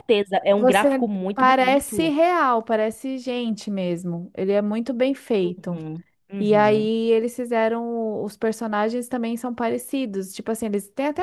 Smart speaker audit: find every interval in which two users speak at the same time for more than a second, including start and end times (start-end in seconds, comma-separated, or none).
0.6-2.1